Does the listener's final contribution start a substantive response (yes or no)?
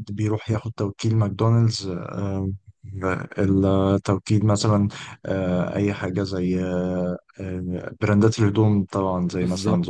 no